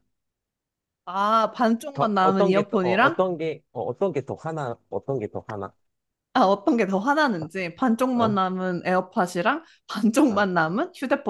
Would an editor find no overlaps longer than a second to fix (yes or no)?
no